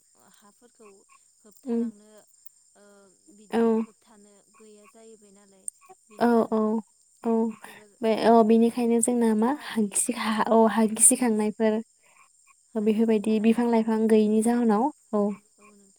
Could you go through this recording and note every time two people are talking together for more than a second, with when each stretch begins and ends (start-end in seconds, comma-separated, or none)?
12.9-14.6